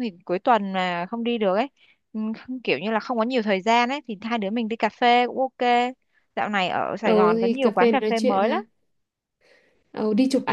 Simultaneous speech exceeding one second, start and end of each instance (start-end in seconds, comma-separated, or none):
7.0-8.6